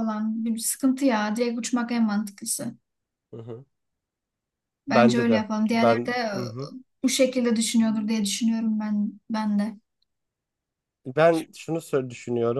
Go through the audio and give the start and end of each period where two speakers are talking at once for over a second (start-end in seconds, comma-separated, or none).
4.9-6.7